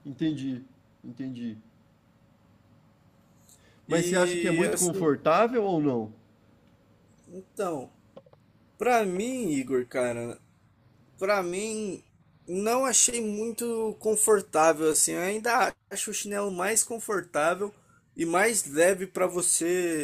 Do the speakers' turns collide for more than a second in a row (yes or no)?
yes